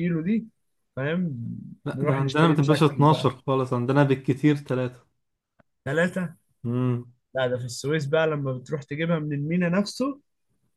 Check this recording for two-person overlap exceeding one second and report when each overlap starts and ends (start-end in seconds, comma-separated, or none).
1.9-3.3